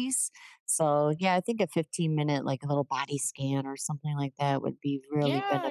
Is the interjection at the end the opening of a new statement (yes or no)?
yes